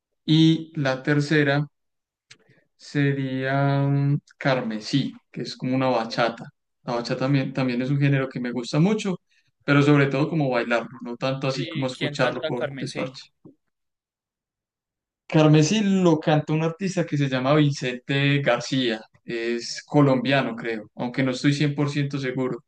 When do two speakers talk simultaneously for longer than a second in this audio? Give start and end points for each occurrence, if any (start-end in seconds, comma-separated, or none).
11.5-13.2